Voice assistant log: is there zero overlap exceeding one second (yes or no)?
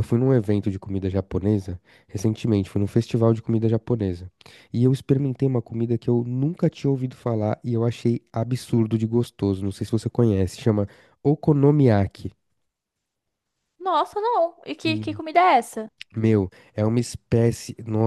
yes